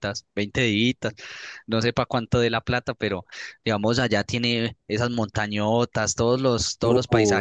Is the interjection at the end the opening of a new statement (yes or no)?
no